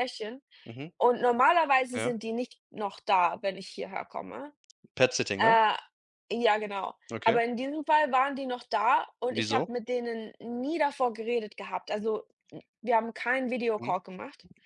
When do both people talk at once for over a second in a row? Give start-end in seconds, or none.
none